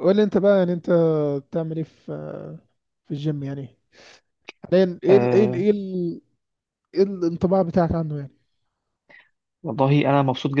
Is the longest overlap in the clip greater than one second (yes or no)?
no